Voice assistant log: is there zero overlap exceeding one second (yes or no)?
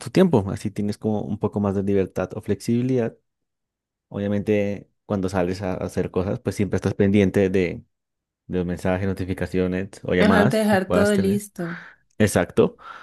no